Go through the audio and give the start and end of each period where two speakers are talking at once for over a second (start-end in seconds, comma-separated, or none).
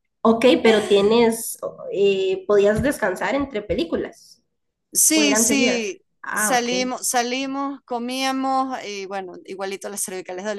5.1-6.7